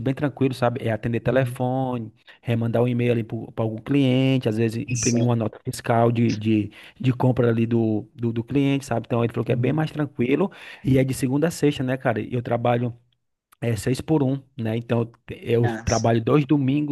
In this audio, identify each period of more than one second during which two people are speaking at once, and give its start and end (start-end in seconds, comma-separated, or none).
none